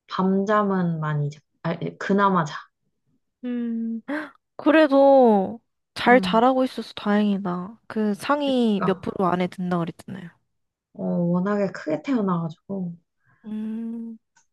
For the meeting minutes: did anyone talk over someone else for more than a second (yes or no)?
no